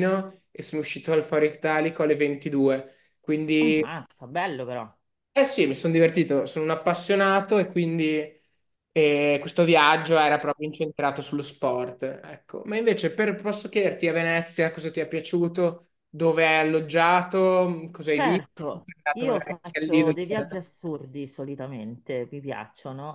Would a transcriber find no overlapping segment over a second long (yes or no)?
no